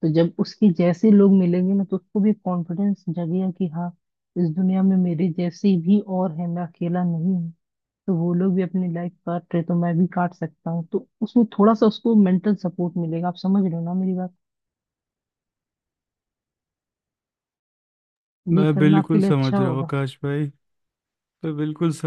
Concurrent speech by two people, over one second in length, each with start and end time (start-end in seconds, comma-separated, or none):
18.6-19.9